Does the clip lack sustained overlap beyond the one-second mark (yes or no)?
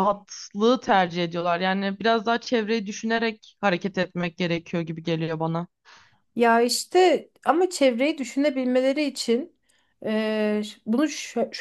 yes